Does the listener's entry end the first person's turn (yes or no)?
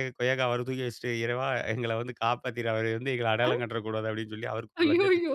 yes